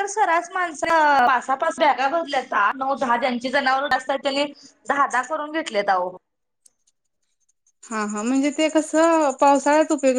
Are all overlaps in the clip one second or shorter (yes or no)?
yes